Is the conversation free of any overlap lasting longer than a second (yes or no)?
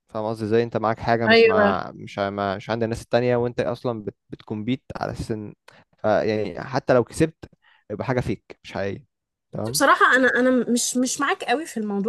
yes